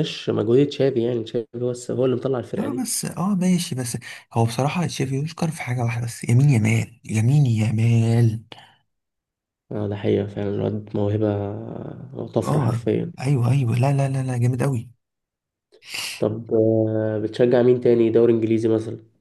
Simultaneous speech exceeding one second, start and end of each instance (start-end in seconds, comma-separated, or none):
none